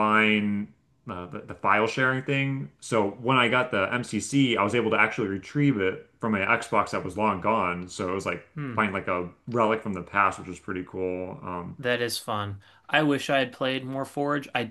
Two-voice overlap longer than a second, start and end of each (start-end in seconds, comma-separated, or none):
none